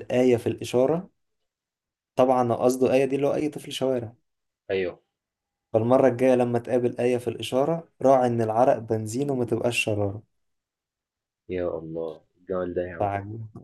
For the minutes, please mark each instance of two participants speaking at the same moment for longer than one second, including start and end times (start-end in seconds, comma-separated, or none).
none